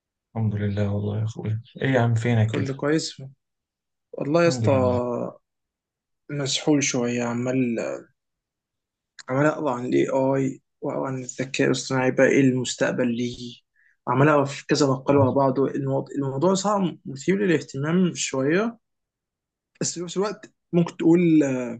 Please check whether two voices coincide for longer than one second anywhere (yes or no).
no